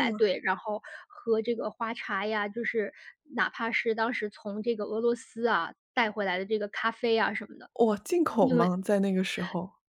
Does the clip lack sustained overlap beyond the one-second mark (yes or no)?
yes